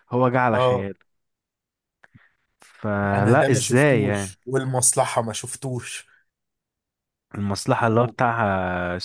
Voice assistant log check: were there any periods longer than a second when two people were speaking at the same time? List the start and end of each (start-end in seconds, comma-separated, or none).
3.1-4.4